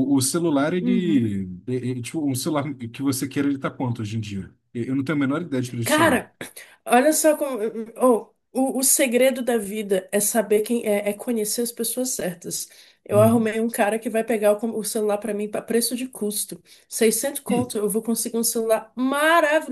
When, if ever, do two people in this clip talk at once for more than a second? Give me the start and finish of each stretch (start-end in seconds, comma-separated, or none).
none